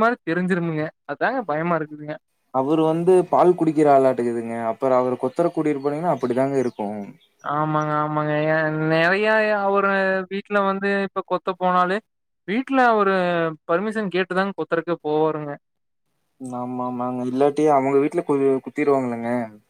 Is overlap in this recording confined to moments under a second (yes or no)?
yes